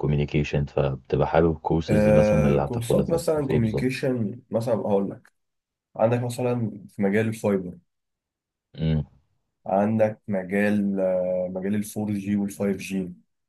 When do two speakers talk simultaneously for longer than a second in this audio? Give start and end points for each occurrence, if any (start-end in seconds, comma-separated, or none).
1.9-4.0